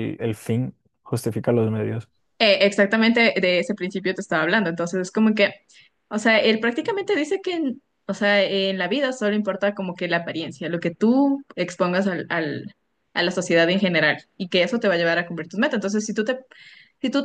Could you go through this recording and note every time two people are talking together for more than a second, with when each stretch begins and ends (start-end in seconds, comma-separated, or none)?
none